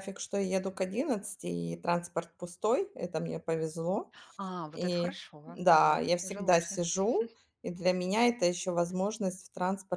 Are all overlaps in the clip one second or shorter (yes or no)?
no